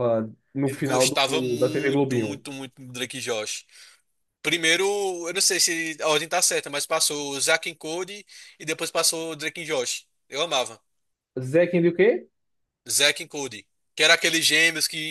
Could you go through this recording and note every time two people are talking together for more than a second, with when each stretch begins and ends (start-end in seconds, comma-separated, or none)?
0.6-2.5